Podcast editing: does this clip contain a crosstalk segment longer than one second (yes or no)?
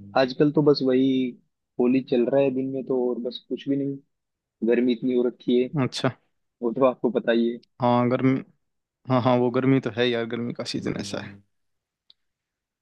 no